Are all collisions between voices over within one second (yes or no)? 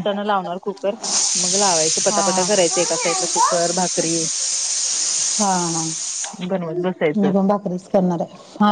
no